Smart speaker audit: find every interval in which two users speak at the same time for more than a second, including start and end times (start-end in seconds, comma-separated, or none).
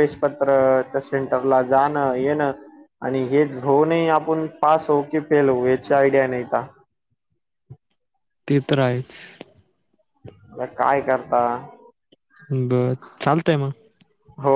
none